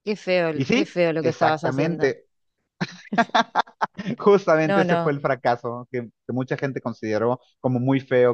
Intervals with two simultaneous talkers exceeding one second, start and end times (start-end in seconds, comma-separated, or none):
0.5-2.1